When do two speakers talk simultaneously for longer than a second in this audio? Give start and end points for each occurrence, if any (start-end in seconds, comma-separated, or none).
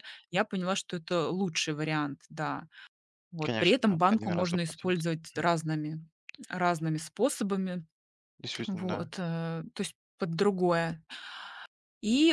3.4-5.5